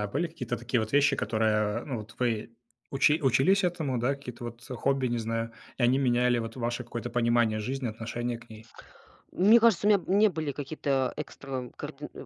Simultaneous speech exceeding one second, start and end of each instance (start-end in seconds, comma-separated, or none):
none